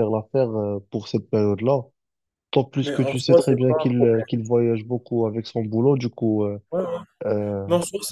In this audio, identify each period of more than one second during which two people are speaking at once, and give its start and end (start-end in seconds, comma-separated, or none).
2.8-4.3